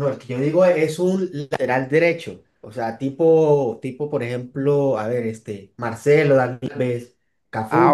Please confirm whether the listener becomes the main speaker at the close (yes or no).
yes